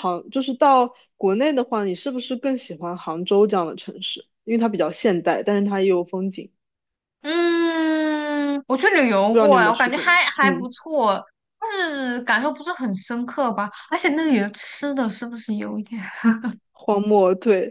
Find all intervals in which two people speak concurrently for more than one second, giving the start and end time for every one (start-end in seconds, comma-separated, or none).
9.3-10.7